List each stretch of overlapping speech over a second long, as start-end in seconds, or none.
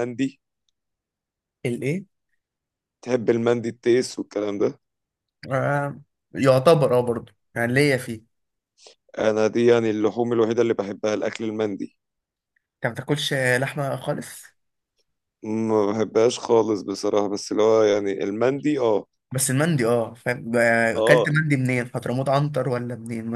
none